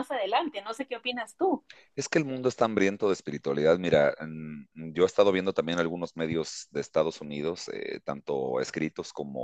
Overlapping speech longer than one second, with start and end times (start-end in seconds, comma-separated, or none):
none